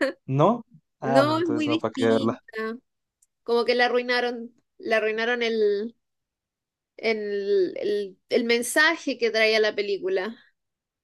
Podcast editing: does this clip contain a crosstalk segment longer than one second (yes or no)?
yes